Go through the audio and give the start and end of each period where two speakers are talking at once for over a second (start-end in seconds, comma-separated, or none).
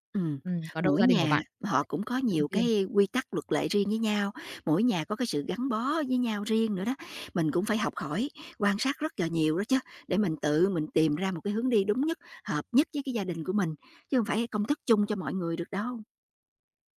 0.8-2.7